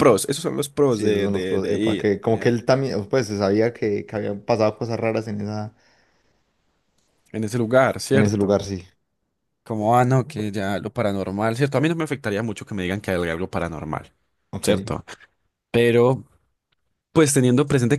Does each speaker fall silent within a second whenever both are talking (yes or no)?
no